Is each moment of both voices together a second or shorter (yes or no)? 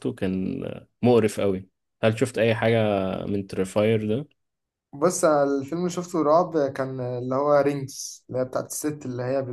yes